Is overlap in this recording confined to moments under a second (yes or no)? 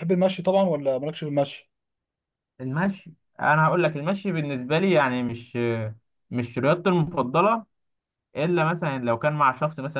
yes